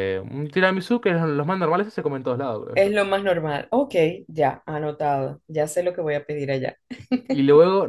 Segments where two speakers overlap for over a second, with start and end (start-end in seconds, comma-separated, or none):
none